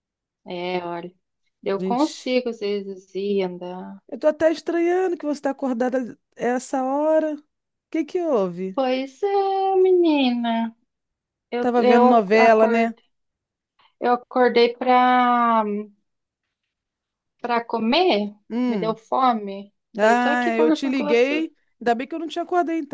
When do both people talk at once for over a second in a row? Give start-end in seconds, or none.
11.6-12.9, 20.0-21.5